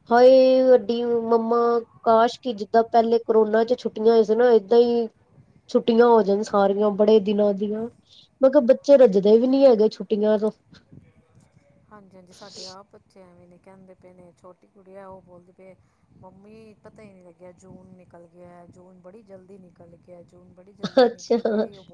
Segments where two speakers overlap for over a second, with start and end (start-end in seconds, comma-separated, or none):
none